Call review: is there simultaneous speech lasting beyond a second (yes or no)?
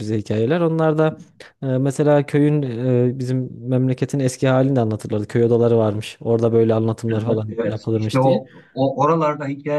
yes